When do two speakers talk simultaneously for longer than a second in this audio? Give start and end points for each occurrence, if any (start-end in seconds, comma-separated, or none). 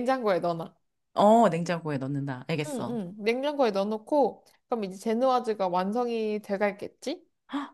none